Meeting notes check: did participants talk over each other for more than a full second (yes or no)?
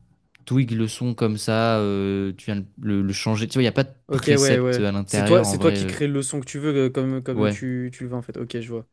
yes